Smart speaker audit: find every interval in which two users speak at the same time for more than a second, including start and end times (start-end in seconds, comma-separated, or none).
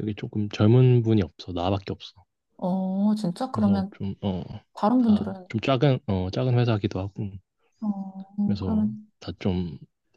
none